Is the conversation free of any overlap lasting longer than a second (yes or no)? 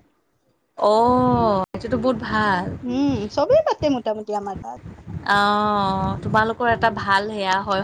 yes